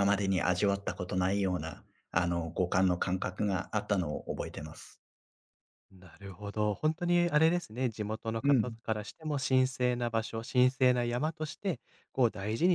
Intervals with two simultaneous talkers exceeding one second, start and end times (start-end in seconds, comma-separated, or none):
none